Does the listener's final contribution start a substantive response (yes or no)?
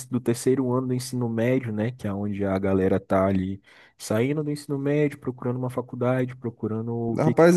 yes